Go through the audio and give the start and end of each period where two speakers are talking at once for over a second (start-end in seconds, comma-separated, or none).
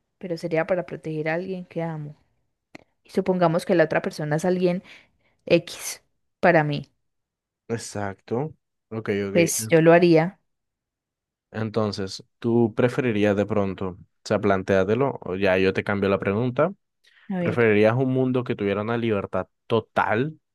none